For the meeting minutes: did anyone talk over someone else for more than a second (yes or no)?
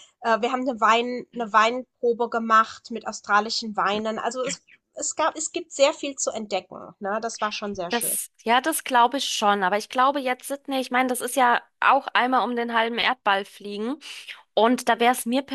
no